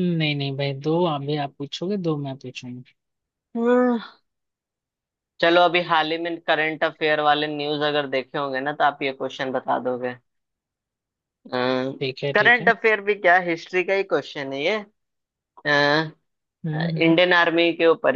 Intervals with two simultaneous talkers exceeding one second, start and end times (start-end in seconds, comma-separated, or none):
none